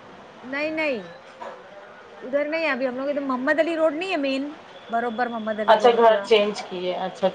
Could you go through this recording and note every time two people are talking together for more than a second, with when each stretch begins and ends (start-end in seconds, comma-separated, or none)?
none